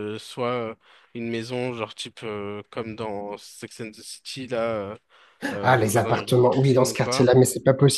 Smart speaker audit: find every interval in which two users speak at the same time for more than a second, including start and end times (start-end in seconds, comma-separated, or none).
5.6-7.3